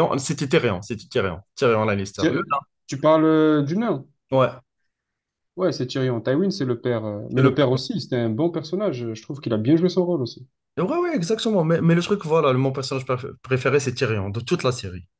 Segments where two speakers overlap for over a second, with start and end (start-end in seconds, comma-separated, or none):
none